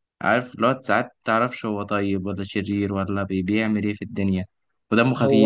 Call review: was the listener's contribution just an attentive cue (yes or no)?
yes